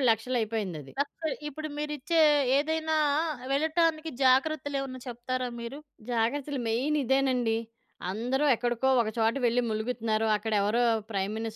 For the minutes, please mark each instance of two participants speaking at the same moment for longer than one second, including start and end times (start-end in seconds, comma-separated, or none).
none